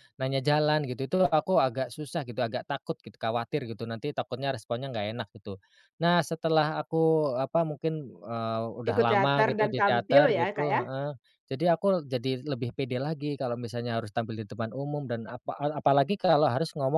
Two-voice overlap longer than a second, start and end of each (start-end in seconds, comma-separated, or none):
8.9-10.8